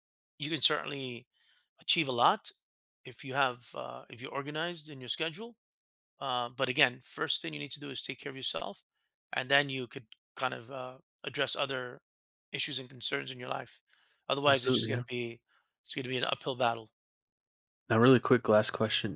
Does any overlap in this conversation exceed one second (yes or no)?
no